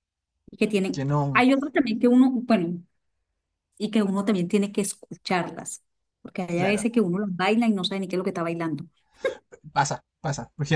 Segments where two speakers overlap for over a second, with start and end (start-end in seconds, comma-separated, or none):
none